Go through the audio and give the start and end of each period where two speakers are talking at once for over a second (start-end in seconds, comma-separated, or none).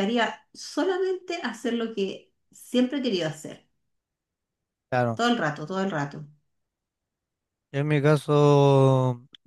none